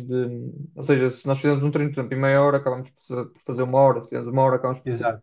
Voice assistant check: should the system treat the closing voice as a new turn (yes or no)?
no